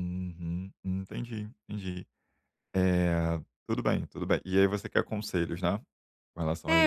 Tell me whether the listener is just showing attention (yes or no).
no